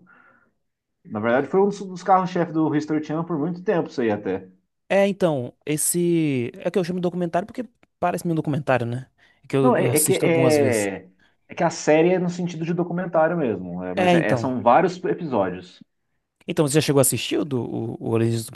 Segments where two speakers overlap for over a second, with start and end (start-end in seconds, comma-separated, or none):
9.6-10.9